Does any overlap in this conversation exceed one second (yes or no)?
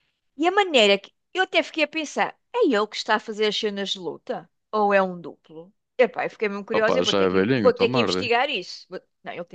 yes